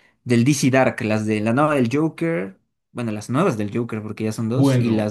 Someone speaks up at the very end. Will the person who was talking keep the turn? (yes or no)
no